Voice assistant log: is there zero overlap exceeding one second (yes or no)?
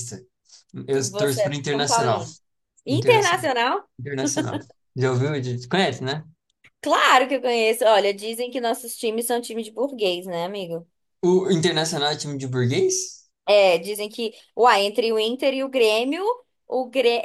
no